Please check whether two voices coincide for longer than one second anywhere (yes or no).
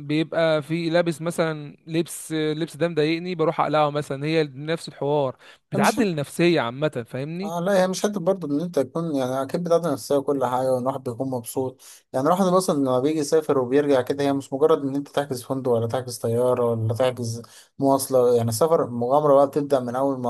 no